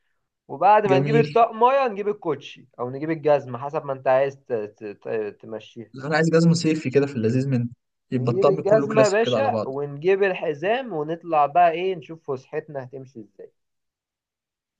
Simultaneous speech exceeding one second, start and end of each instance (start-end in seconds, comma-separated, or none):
8.1-9.7